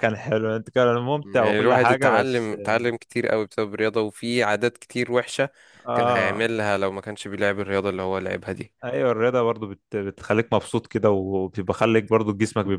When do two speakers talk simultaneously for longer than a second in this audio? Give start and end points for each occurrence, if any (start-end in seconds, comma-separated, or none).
1.2-2.5